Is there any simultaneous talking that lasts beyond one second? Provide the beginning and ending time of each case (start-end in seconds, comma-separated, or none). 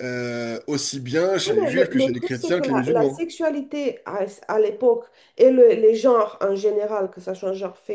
1.5-3.2